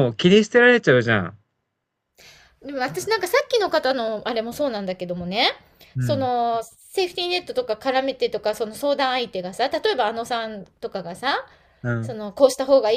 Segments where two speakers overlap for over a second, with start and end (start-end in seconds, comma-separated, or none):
none